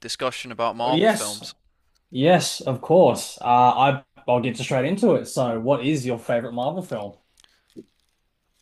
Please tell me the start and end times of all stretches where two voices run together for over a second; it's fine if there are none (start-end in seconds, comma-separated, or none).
none